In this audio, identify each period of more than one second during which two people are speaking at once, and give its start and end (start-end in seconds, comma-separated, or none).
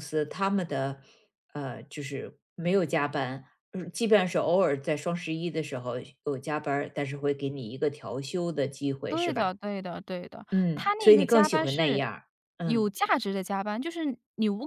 10.5-12.0